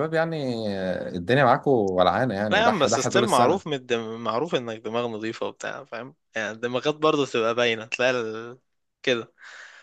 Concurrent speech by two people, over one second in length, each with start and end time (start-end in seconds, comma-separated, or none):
2.5-3.8